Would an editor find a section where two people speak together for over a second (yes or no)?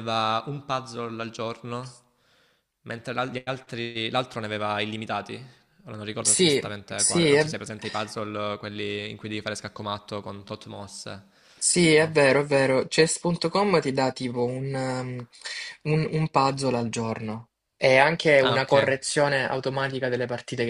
yes